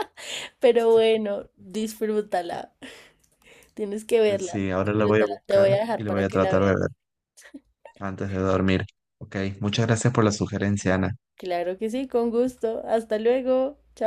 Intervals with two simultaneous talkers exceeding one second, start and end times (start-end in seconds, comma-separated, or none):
4.2-6.8